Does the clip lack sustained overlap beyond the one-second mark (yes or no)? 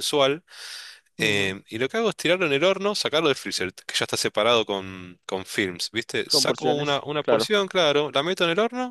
no